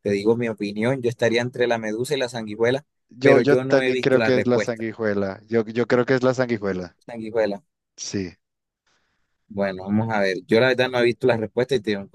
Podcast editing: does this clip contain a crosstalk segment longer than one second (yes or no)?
yes